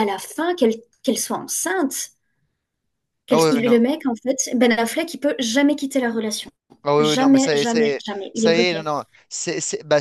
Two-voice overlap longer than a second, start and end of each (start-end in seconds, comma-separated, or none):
7.0-8.9